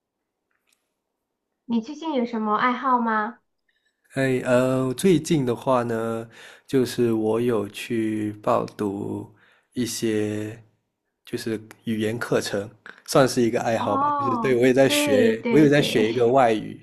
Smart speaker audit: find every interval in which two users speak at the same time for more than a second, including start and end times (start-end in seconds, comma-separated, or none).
13.8-16.0